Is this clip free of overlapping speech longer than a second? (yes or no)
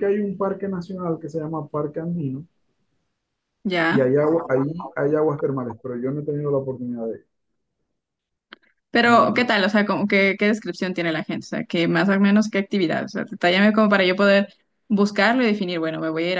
yes